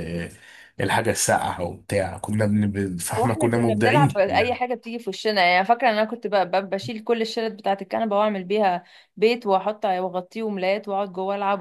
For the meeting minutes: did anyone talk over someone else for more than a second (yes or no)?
yes